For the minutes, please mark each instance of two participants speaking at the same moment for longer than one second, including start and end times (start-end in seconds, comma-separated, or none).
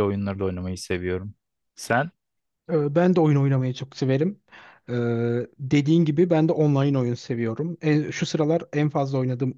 none